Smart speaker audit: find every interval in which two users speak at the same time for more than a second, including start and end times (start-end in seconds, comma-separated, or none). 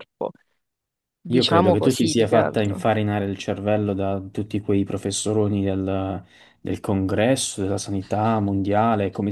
1.3-2.8